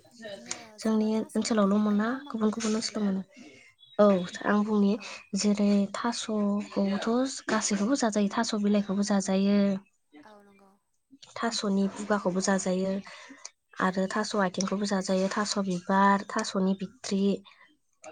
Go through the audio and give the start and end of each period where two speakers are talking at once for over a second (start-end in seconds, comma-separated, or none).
0.8-3.1